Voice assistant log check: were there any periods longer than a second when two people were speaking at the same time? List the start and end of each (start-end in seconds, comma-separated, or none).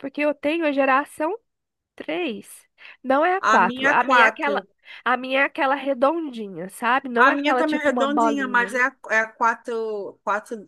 3.4-4.7, 7.2-8.7